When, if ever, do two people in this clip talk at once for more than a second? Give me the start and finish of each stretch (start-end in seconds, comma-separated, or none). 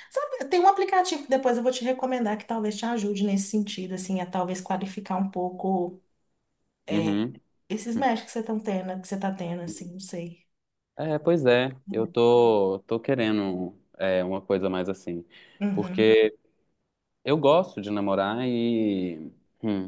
none